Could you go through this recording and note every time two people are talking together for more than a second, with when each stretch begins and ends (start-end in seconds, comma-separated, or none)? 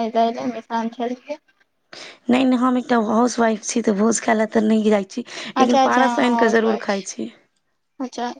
5.6-7.1